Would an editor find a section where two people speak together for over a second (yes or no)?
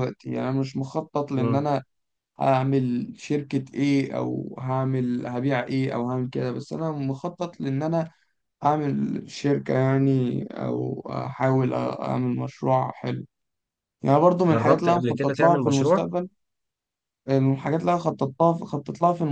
yes